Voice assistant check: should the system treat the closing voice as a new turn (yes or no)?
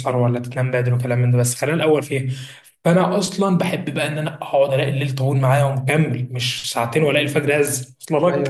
yes